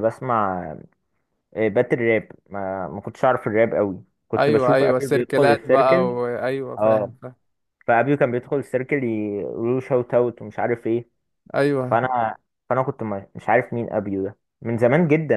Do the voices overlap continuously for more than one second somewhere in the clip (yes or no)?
yes